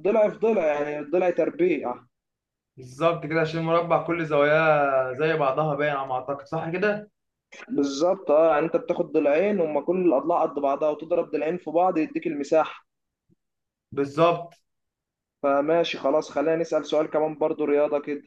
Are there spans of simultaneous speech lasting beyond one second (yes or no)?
no